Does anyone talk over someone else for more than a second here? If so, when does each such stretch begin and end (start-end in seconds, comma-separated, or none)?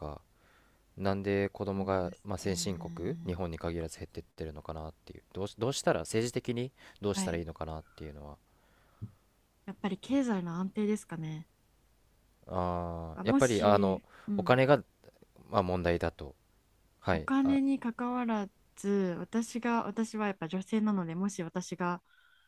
1.8-3.4, 13.2-14.6